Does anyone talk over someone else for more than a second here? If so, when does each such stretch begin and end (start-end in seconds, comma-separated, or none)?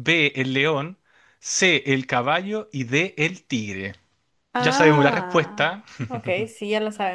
4.6-5.8